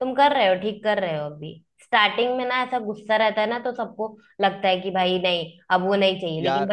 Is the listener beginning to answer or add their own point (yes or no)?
no